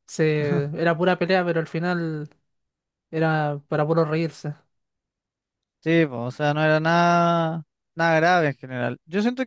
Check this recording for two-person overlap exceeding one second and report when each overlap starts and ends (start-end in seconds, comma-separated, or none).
none